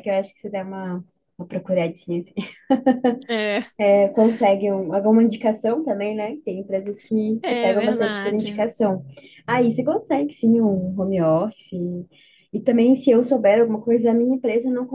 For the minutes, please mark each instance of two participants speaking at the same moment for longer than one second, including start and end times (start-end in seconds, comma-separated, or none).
7.4-8.7